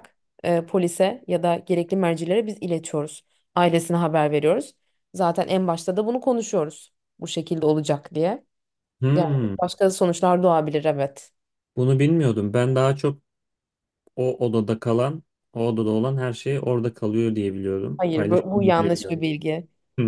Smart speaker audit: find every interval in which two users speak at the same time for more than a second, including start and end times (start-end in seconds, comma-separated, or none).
18.0-19.2